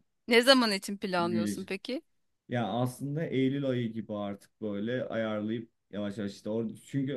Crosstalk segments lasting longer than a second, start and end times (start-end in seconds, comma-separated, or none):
none